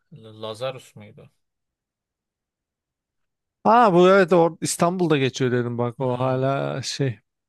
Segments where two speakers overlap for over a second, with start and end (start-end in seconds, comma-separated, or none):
none